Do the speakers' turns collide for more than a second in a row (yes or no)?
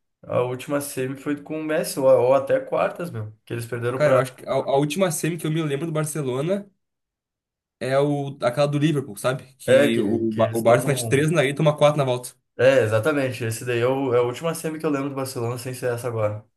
yes